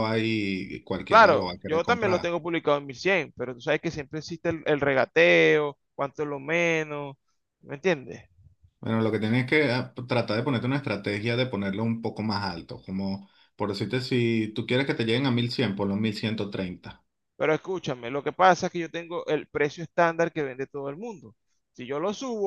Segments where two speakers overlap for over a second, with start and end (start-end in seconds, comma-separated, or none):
1.1-2.4